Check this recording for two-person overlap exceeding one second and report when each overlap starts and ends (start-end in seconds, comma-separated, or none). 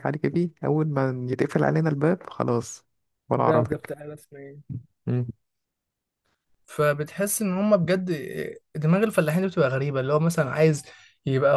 none